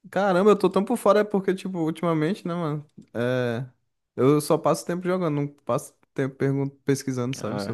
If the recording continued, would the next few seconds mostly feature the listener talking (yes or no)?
yes